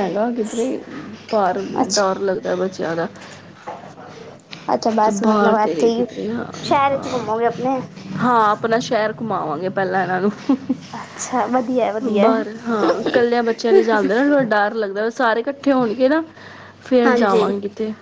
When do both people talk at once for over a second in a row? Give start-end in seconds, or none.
none